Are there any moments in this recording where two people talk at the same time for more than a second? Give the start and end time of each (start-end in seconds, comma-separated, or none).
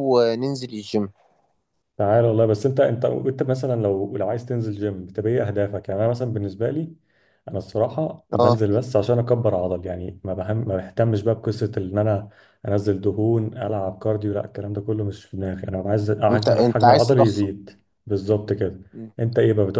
16.3-17.5